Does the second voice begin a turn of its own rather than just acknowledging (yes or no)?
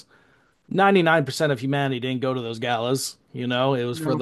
no